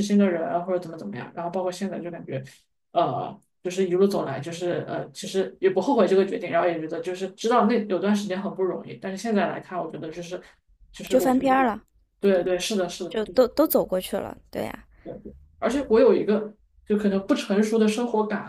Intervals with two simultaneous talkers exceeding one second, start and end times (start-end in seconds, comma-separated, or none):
none